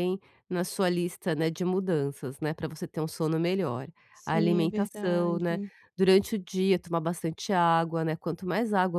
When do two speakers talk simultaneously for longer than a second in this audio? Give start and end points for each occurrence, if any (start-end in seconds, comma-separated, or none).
4.2-5.6